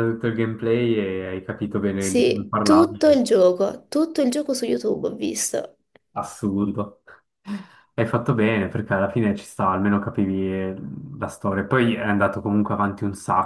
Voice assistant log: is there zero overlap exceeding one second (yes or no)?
no